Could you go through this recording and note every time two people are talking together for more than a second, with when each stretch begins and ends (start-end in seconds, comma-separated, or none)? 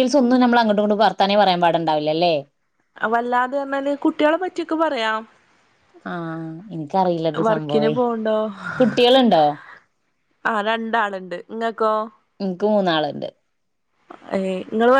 none